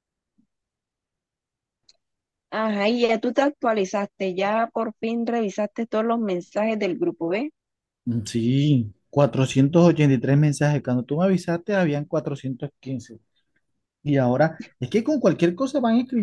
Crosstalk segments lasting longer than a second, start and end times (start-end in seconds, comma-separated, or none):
none